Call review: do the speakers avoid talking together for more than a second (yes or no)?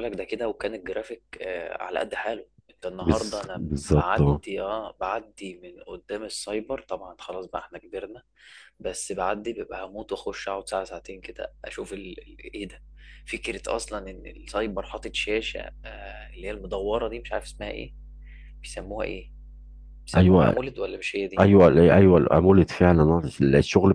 no